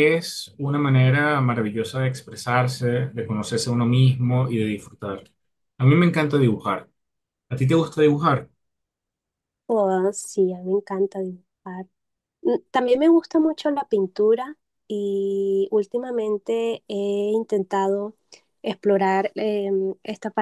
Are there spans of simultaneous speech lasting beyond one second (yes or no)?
no